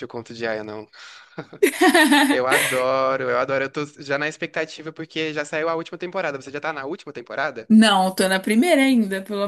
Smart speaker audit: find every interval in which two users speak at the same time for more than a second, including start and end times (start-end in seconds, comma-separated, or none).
none